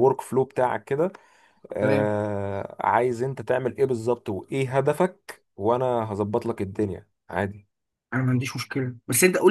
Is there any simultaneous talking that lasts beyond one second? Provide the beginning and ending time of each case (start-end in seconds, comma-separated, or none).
none